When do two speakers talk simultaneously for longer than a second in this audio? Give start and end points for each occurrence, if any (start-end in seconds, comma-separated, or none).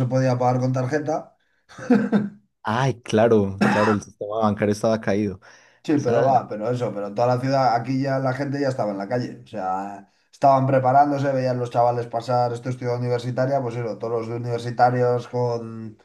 none